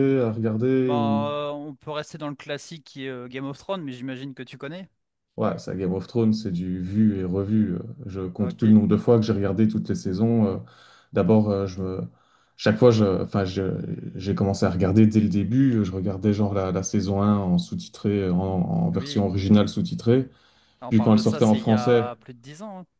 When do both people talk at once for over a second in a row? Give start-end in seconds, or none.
20.9-22.1